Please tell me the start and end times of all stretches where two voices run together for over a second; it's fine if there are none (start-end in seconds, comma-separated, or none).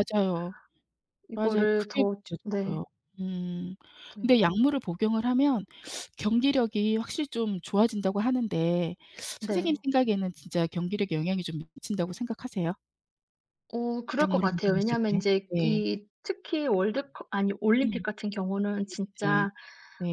1.3-2.8, 14.2-15.8